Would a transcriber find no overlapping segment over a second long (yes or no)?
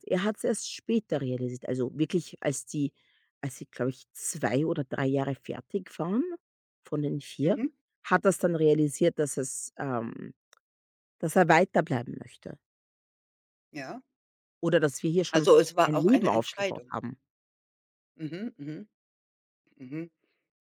no